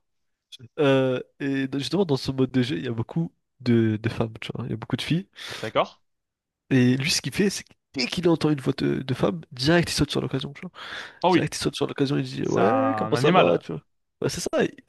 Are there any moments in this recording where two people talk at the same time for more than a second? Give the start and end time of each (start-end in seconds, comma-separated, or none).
12.4-13.7